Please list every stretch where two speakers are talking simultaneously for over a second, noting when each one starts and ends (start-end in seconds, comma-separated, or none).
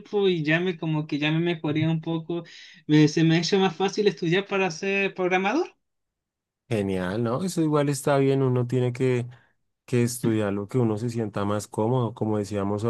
none